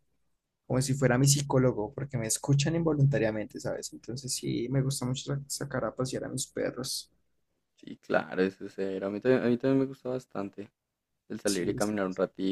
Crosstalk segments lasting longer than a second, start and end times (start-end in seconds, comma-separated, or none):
none